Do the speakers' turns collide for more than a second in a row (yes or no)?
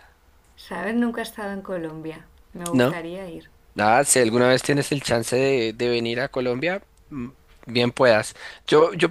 no